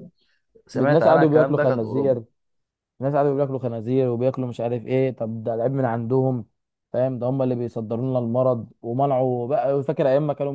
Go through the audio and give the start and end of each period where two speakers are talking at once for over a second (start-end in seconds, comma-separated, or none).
0.8-2.2